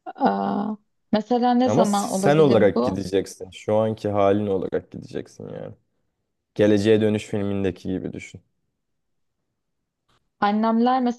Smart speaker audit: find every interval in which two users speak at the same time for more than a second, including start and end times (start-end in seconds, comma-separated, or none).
1.6-2.9